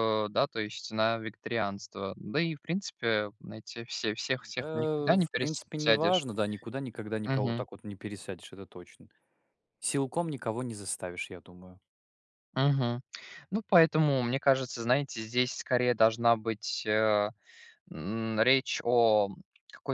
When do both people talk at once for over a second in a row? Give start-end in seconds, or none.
4.6-6.2